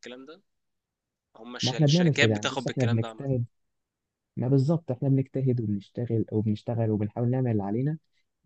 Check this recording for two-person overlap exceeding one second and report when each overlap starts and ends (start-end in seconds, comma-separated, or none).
1.6-3.3